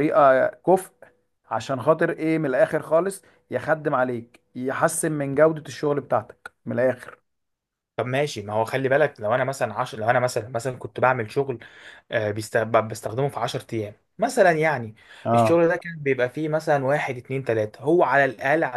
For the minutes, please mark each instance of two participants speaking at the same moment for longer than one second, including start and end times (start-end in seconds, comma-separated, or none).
none